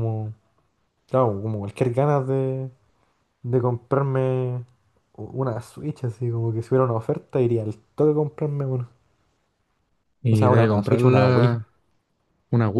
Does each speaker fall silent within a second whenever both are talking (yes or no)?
no